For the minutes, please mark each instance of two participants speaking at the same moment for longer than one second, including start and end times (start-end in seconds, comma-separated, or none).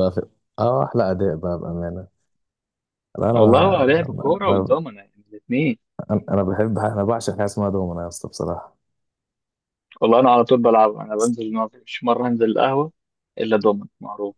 3.3-4.8